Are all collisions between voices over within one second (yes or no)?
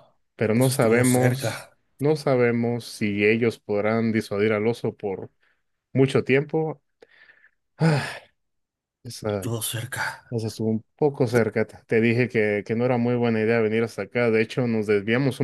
no